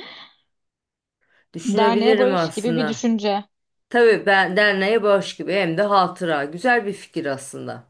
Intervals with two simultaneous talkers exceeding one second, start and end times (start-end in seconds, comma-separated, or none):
1.6-3.0